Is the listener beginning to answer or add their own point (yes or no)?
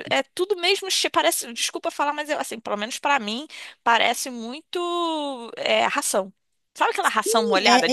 yes